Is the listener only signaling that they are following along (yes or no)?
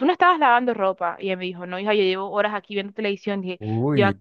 yes